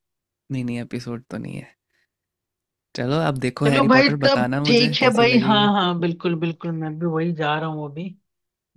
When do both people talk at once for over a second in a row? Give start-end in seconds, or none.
3.6-5.7